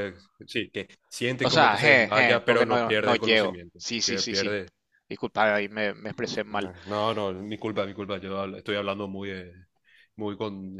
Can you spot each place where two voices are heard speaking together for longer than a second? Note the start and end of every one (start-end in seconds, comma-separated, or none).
1.4-4.5